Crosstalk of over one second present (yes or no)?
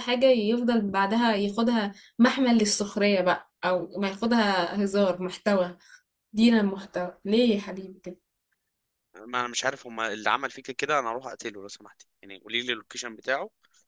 no